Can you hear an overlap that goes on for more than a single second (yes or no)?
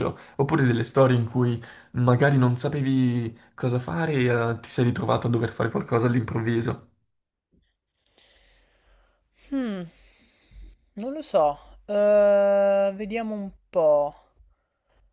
no